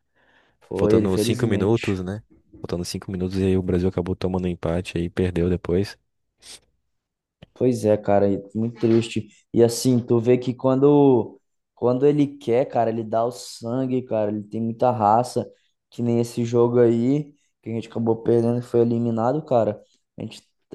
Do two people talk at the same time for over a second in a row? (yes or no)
yes